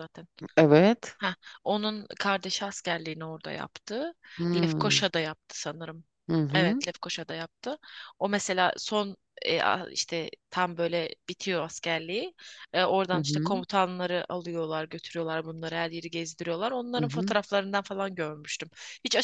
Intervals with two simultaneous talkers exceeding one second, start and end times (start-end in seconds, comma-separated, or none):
none